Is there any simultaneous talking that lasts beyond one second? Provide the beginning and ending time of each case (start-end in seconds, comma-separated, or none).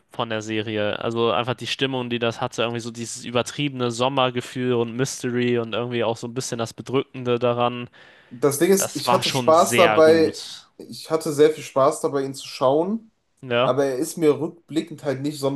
8.8-10.4